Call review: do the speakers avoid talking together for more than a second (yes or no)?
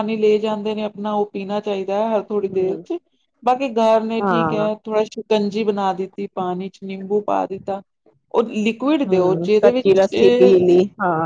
no